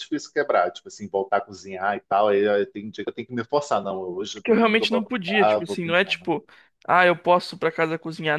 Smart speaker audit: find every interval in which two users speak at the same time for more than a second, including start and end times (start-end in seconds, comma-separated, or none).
4.3-6.3